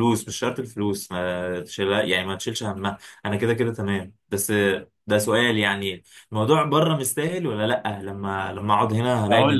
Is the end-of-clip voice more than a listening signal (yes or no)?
yes